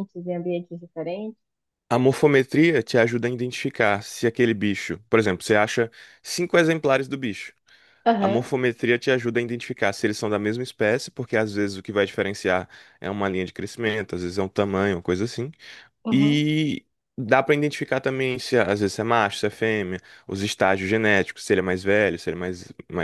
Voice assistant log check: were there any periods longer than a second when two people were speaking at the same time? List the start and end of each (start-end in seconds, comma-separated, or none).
none